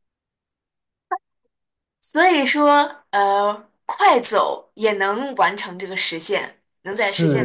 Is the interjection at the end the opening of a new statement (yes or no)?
yes